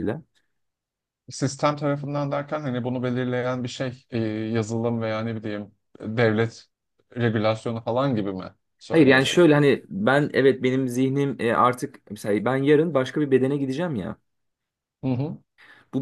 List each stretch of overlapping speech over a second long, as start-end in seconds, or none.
none